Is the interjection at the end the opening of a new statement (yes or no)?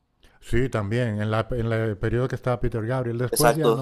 yes